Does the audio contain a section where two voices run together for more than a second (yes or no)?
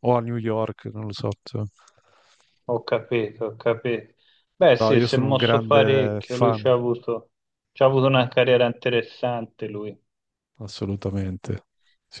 yes